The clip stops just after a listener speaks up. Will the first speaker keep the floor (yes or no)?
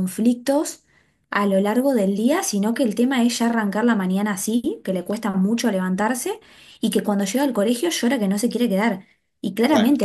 yes